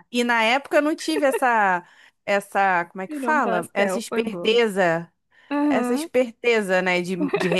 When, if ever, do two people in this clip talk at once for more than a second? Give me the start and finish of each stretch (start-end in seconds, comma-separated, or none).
3.1-4.6